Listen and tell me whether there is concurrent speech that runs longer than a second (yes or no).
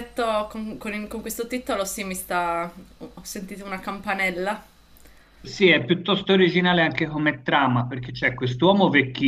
no